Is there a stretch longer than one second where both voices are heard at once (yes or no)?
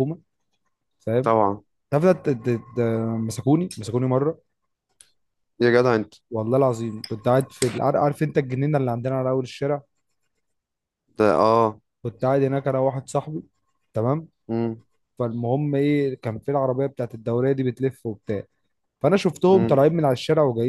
no